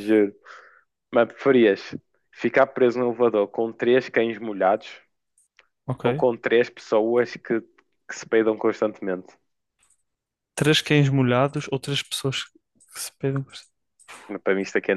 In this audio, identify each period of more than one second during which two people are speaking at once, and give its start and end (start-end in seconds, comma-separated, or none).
none